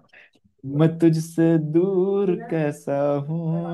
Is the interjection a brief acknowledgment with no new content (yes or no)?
yes